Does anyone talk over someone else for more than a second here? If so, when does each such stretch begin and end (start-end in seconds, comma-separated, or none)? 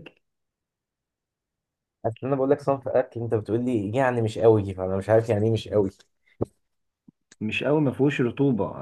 none